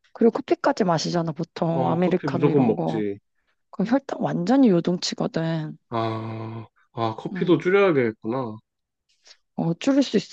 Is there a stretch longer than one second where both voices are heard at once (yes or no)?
yes